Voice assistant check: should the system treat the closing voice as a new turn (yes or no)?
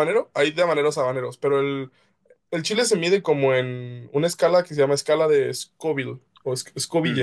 yes